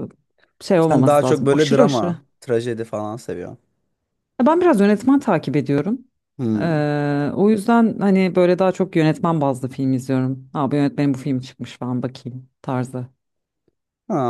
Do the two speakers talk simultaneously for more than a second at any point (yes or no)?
yes